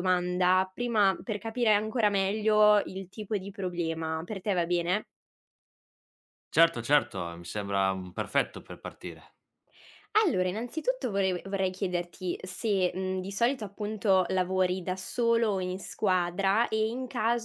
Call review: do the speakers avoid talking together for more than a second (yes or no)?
yes